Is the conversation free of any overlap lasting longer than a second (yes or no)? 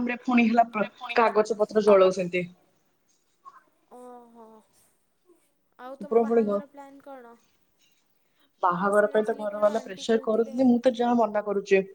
no